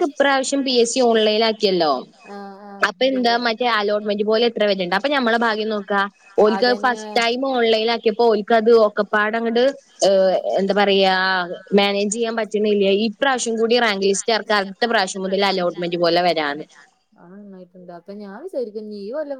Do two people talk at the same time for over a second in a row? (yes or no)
no